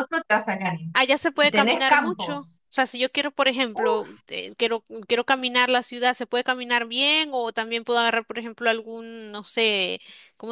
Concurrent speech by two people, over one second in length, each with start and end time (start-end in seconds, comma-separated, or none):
0.9-2.6